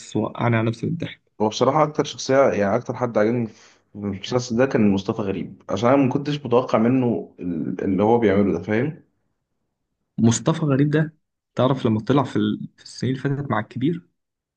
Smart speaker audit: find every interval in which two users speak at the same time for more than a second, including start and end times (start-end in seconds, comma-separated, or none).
none